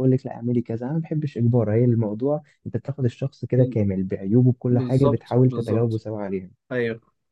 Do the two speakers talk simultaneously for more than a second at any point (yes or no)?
yes